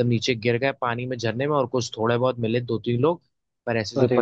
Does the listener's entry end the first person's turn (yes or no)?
no